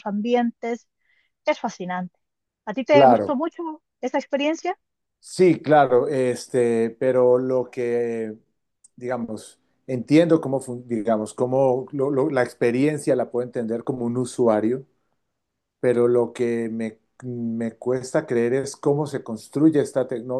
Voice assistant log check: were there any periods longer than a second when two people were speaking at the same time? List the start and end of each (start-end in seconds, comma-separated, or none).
none